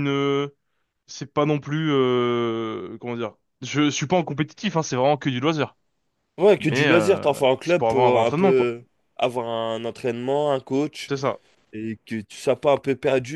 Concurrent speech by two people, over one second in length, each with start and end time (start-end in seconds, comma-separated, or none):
6.7-8.7